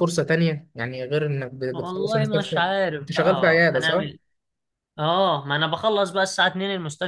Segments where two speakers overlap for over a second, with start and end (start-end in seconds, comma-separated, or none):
1.7-4.1